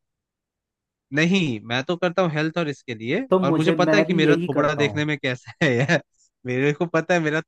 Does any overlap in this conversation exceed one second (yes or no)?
yes